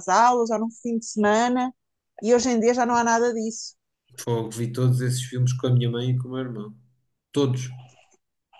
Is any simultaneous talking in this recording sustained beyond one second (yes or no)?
no